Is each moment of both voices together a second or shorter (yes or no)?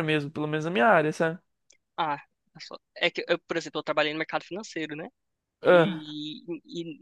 yes